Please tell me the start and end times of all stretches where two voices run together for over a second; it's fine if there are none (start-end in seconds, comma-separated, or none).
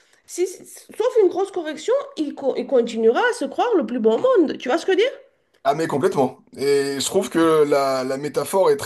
none